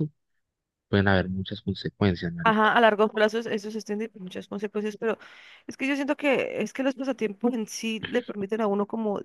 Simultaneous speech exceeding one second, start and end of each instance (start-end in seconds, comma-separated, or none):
none